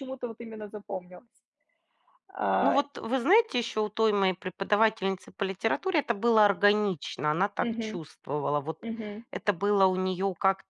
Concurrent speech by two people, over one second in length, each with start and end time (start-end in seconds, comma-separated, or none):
none